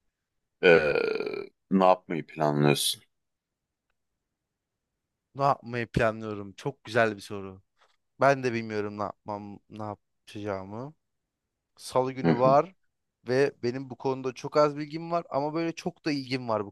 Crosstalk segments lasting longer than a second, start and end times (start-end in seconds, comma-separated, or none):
none